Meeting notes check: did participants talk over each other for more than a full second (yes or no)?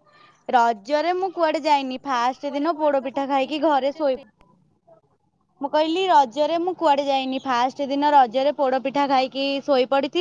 yes